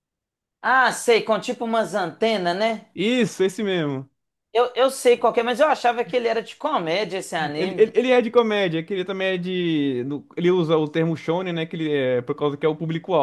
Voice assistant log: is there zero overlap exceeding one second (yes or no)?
yes